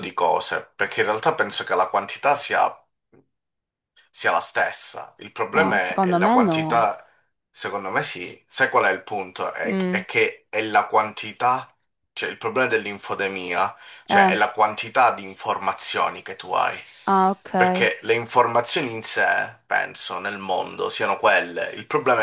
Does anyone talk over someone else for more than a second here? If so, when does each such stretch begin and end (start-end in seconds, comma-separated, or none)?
5.5-6.9